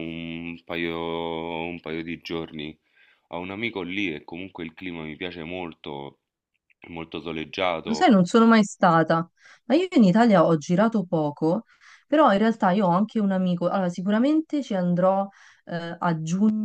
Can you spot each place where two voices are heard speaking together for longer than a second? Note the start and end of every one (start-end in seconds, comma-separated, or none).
none